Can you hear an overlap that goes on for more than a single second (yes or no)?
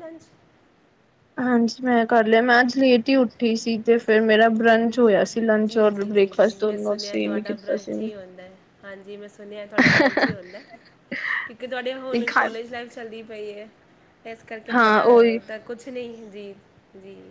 yes